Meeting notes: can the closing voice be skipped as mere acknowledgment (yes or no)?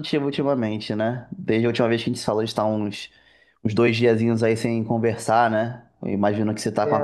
yes